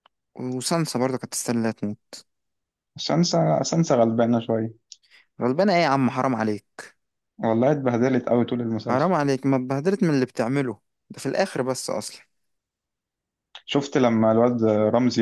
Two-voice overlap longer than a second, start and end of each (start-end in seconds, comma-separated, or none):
none